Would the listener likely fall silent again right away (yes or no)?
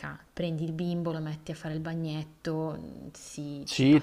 no